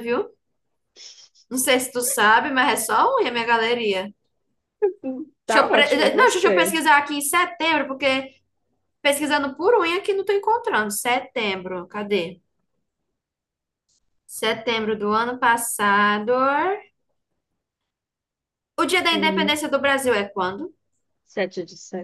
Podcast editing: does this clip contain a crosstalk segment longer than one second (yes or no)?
yes